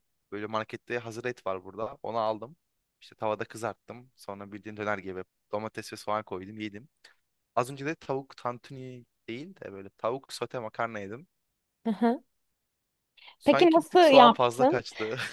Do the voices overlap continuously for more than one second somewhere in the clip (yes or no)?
yes